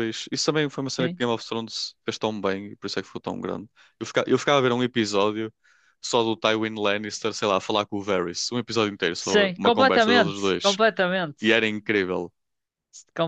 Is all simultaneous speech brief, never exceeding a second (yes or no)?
no